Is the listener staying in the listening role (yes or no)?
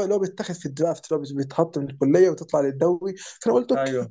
yes